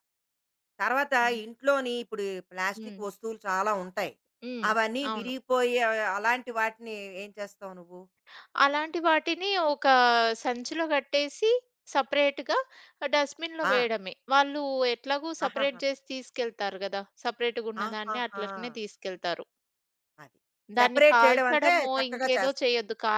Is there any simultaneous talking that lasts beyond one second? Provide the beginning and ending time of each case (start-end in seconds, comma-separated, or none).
20.8-22.6